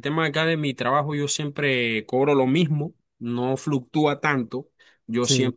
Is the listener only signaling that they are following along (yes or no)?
yes